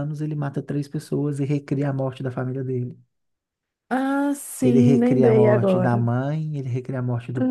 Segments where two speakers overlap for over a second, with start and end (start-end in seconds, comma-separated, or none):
4.6-6.0